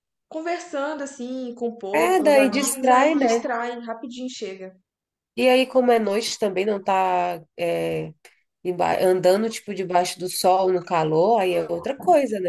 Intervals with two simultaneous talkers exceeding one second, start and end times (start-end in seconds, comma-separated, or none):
1.9-3.5